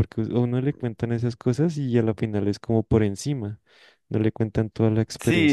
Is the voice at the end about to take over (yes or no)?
yes